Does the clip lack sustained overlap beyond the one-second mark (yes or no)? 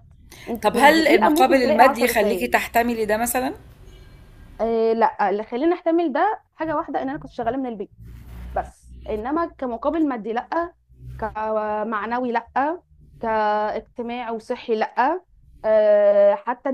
no